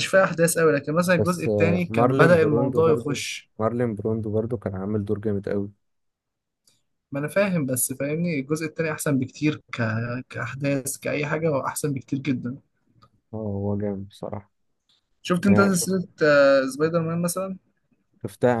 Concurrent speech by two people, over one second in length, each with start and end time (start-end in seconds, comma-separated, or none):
1.2-3.2